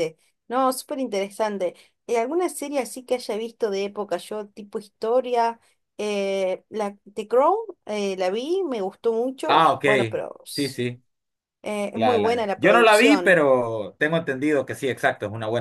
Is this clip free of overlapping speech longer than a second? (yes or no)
no